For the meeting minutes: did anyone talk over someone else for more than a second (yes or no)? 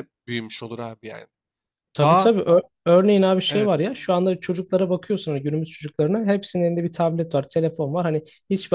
no